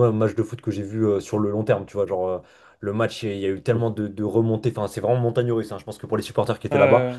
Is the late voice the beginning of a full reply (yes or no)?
no